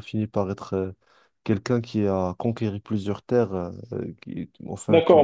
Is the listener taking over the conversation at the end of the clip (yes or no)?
yes